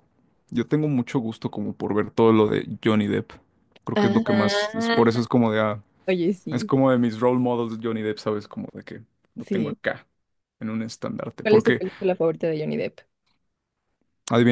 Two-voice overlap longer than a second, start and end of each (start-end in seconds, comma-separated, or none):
3.9-5.2